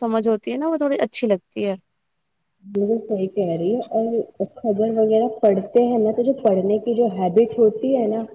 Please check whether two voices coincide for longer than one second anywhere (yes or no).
no